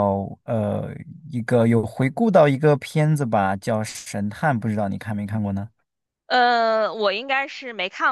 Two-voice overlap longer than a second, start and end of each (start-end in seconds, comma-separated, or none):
none